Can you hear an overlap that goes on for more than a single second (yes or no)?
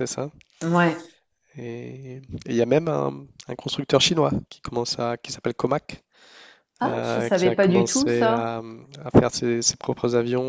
yes